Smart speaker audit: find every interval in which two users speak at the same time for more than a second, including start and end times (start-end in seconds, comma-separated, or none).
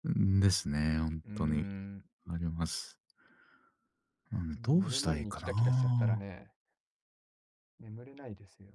4.5-6.3